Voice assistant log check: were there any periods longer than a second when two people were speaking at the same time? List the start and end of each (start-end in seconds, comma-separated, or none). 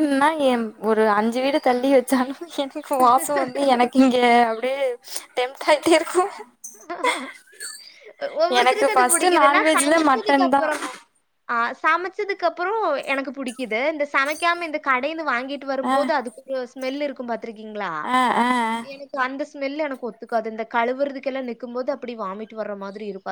8.6-10.6